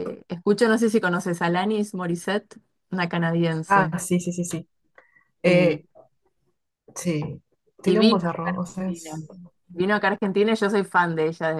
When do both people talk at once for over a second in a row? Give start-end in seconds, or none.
7.8-9.2